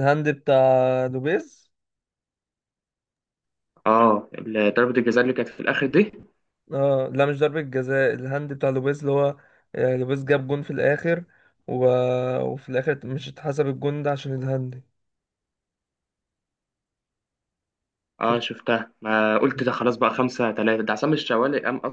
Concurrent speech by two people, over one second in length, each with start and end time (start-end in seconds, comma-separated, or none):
none